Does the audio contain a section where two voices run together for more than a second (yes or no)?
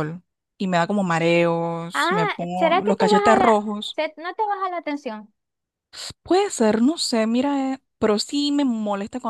yes